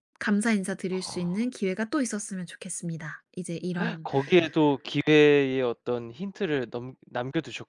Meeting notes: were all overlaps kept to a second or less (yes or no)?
yes